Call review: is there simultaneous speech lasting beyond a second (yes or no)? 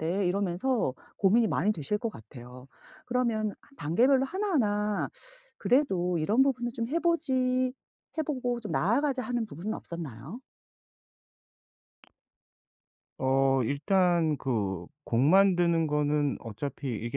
no